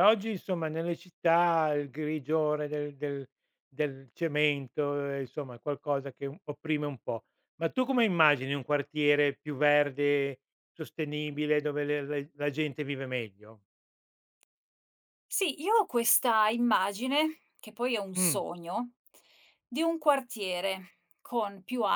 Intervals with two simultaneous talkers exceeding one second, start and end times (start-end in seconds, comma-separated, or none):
none